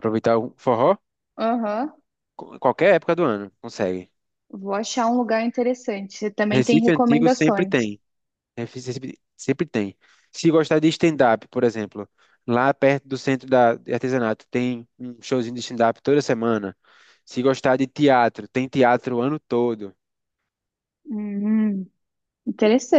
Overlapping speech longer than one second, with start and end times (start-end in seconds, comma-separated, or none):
6.5-7.9